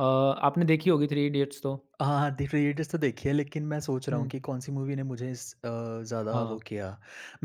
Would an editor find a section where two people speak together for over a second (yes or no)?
no